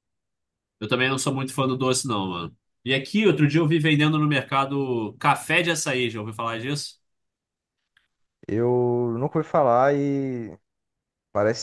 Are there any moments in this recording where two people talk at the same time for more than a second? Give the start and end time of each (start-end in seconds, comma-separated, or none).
none